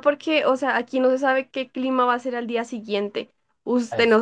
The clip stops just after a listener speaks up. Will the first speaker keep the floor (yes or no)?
yes